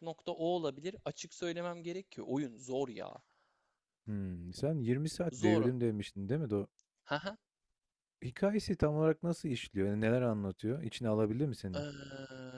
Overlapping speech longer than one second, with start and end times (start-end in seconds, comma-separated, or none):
none